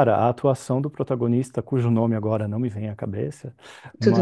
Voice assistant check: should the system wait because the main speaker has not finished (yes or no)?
yes